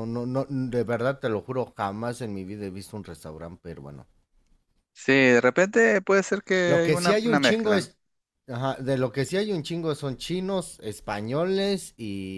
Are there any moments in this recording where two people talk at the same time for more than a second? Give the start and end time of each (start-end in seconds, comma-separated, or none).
6.6-7.9